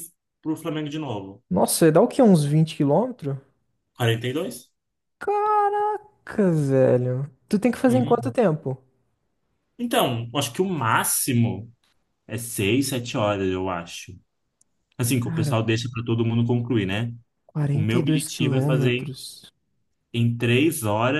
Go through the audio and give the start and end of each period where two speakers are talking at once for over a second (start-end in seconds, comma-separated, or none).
17.7-19.2